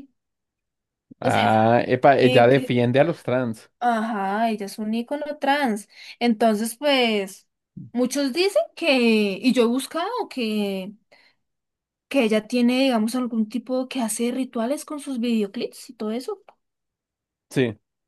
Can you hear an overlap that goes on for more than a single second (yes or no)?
yes